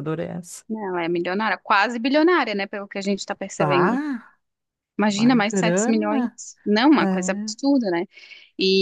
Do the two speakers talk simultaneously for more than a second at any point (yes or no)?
yes